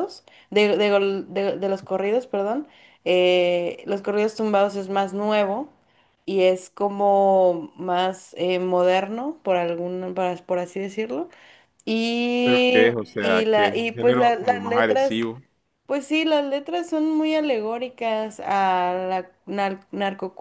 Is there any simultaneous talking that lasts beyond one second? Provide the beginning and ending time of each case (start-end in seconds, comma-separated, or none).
12.4-15.3